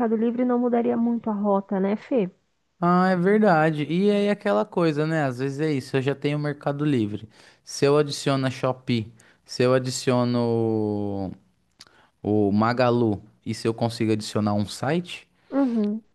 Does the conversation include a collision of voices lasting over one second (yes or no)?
no